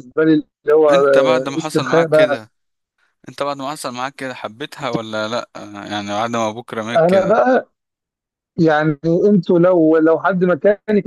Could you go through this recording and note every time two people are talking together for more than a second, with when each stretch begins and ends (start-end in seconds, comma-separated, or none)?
0.9-2.4